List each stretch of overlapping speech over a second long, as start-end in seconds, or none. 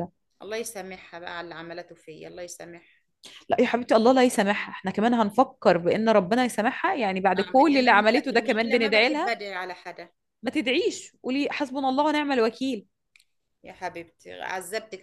7.4-9.4